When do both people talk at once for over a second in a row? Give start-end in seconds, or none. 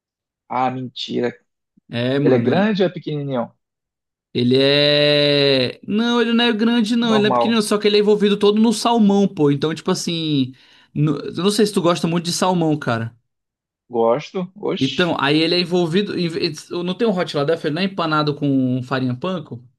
none